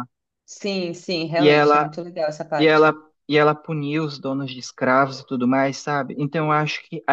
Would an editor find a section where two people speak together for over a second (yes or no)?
no